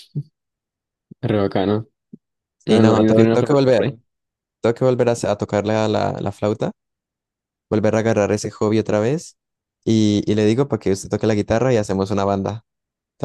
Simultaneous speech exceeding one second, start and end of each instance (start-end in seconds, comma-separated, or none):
2.7-3.9